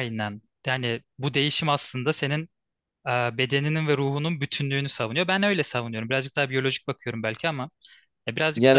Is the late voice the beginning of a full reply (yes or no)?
yes